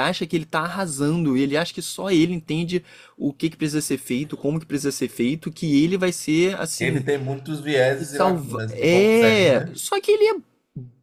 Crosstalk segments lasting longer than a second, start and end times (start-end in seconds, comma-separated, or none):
8.0-9.8